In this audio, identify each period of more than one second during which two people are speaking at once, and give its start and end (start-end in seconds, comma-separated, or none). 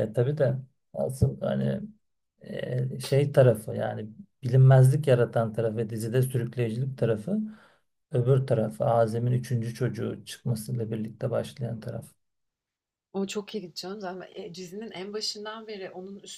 none